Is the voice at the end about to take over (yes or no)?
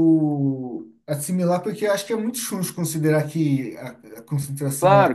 yes